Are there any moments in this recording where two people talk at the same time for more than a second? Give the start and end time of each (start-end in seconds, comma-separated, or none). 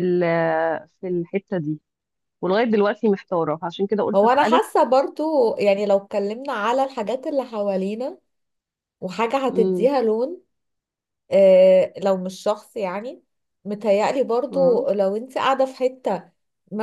none